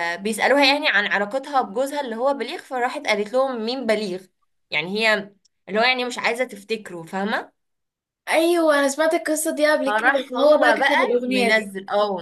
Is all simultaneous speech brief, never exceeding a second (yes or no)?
no